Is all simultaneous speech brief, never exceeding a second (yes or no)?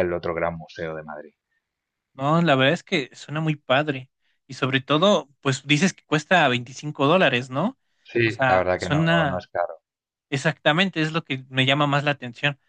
no